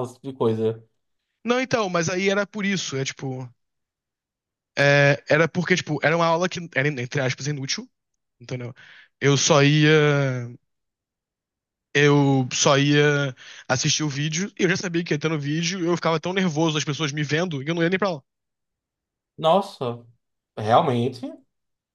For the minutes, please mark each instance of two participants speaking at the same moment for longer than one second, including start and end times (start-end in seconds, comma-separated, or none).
none